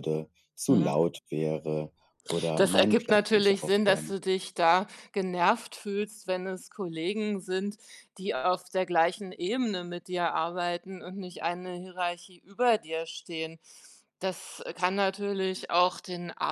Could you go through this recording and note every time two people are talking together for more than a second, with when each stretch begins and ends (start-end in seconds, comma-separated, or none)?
2.5-4.2